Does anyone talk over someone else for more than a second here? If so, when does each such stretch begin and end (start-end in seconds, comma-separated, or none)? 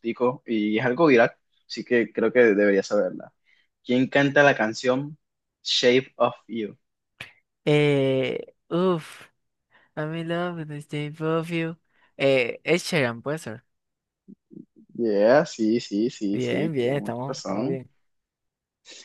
16.3-17.8